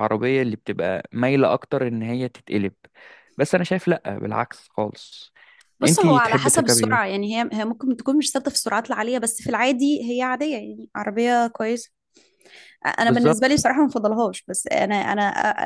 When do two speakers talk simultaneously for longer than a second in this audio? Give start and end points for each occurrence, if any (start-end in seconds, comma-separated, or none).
5.8-7.2